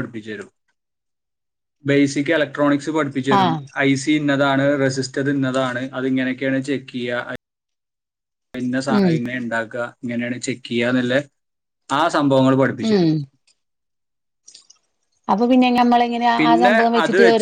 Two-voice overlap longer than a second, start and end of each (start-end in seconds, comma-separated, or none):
none